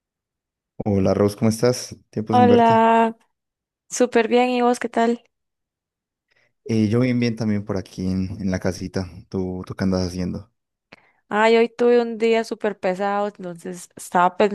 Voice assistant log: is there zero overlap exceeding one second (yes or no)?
yes